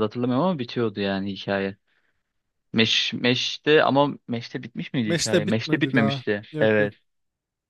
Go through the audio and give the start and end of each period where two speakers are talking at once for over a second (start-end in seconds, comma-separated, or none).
5.0-6.9